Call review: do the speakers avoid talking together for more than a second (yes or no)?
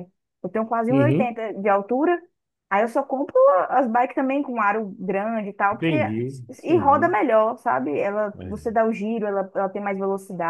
yes